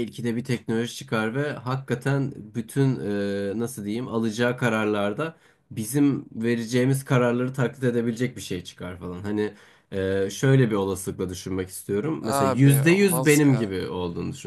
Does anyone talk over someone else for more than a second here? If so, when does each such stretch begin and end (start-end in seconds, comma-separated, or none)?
12.2-13.8